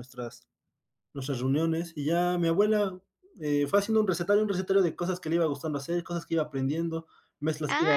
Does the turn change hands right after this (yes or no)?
yes